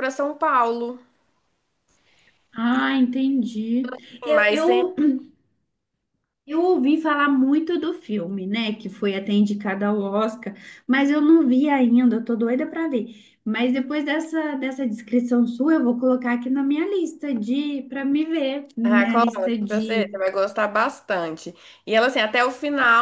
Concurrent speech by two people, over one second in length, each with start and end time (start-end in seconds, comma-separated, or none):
18.9-20.2